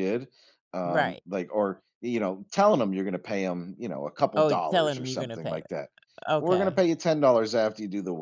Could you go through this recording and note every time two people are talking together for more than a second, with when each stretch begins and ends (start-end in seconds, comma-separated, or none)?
4.4-5.6